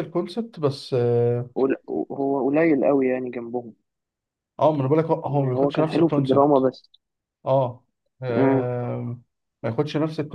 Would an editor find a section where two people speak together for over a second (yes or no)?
yes